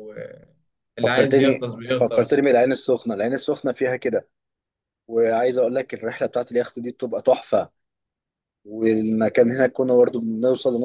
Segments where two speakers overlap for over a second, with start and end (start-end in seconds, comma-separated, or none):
1.1-2.4